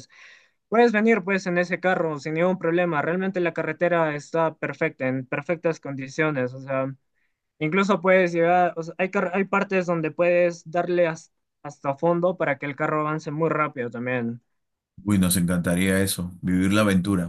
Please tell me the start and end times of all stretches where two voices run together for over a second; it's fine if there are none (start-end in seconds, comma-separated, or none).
none